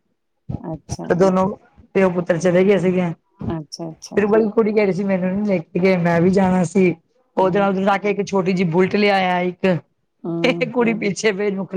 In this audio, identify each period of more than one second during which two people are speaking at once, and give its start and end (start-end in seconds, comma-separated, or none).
none